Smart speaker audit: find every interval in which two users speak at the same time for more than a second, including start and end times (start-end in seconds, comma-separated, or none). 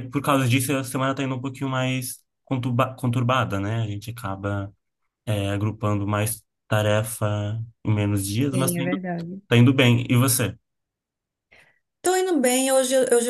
none